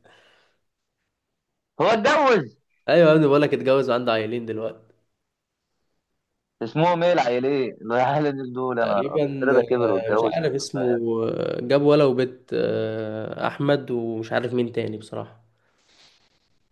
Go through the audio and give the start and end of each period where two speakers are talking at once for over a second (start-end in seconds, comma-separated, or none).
8.8-10.4